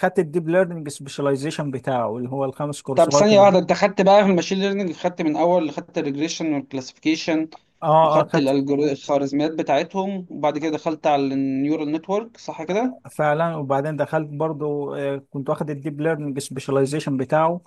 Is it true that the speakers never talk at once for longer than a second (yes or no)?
yes